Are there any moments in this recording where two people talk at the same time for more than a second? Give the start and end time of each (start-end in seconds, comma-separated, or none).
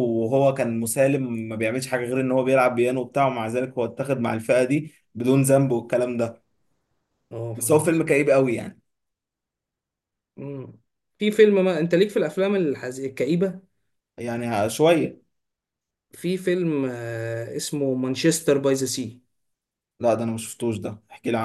none